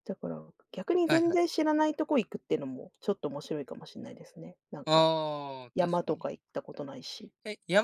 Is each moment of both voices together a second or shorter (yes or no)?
yes